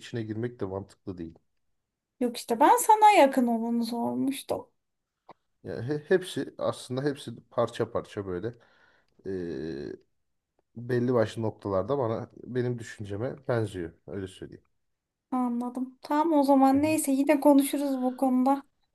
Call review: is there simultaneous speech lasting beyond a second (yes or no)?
no